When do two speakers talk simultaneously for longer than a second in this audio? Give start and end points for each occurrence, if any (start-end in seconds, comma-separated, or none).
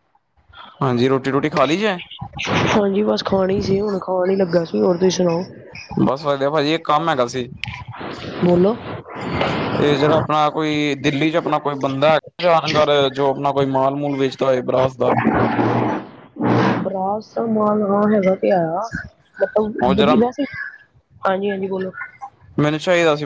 none